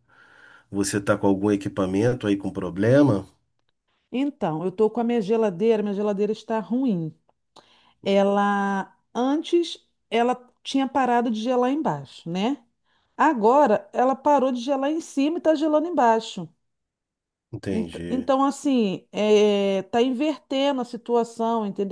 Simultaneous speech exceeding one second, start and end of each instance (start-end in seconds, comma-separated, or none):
none